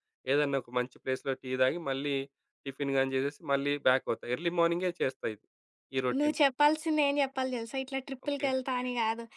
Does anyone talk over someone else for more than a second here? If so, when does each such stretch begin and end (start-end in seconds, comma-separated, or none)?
none